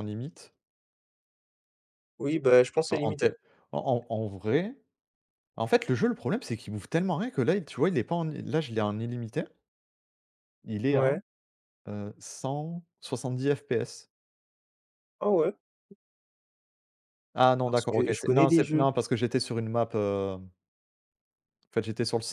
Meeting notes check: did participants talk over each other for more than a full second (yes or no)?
yes